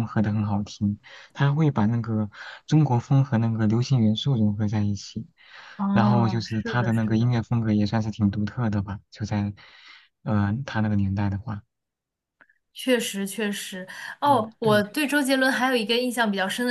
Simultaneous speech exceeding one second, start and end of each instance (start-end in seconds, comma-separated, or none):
5.9-7.4